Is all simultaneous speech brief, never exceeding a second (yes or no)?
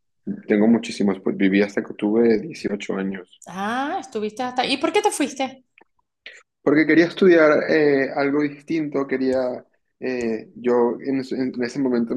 yes